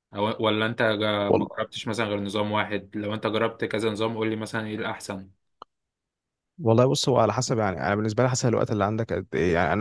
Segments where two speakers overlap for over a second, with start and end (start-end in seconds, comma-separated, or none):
none